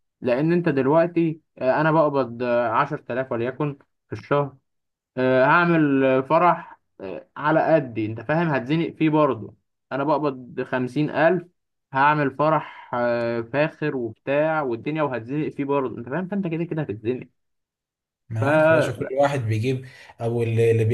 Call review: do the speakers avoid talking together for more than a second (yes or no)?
yes